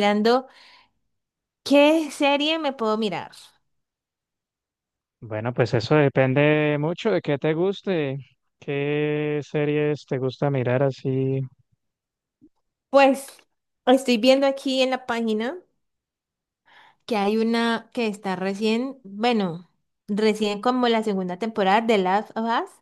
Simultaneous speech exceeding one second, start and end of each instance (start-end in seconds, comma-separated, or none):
none